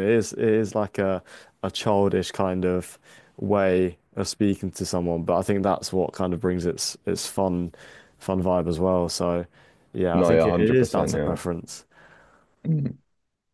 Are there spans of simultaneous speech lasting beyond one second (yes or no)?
yes